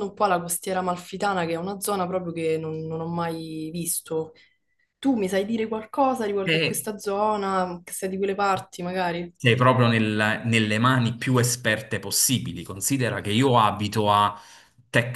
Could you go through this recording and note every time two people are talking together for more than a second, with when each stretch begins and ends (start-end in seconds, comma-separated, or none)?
none